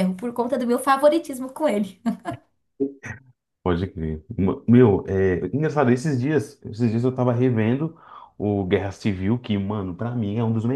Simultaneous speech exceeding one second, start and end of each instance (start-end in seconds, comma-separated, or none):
none